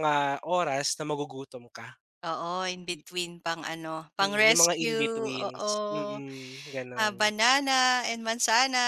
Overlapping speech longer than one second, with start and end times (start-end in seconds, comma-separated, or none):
4.2-5.7